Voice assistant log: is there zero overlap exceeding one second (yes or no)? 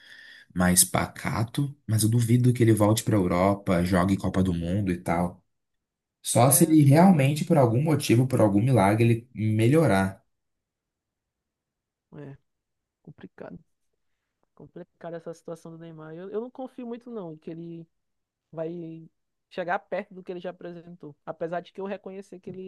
no